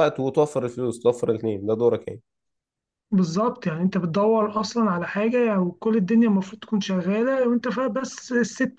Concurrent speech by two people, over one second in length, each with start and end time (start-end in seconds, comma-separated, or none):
none